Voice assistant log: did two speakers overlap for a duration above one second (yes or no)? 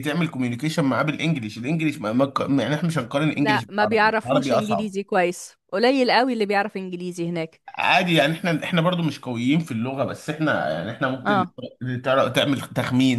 yes